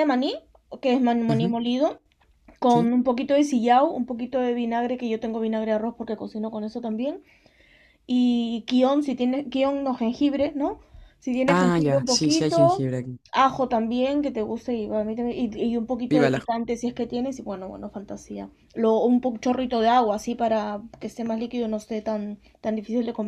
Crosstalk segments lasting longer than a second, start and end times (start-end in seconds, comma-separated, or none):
11.5-12.8